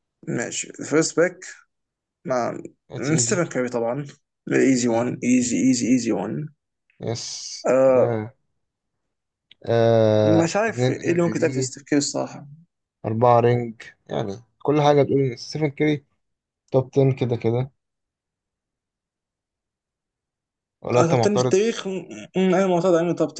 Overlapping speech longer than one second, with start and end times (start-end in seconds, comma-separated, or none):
10.2-11.7